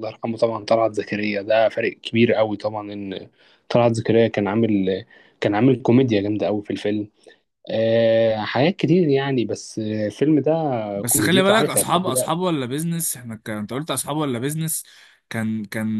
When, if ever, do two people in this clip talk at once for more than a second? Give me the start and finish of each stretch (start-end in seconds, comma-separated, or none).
11.1-12.5